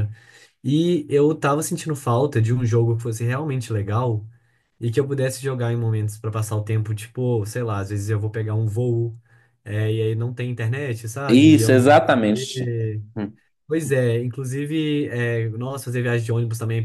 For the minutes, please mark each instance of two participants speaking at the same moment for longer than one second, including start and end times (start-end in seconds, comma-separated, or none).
11.3-12.7